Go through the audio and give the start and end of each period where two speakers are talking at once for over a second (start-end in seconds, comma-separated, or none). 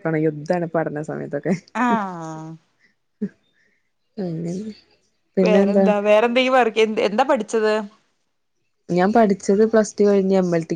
none